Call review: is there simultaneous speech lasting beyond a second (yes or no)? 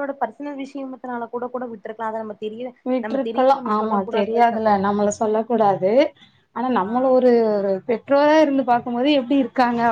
yes